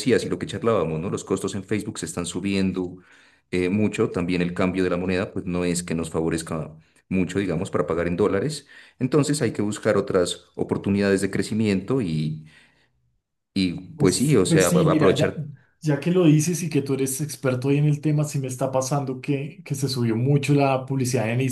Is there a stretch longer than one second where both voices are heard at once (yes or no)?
yes